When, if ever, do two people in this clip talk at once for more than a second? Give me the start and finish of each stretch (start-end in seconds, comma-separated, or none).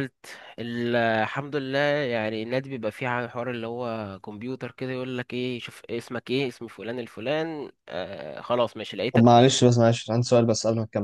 none